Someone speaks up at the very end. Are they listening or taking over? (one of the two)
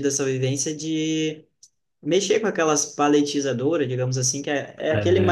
listening